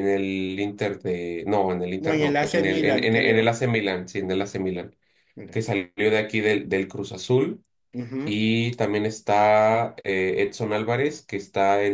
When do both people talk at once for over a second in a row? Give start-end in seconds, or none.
2.0-3.6